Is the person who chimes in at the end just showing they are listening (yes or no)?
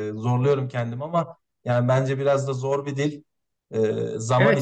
no